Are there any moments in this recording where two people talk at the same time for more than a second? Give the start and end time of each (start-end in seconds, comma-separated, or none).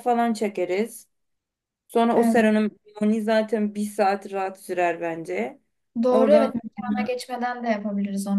none